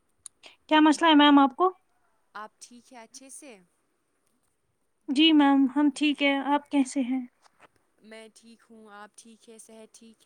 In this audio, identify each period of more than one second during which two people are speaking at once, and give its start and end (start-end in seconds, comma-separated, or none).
none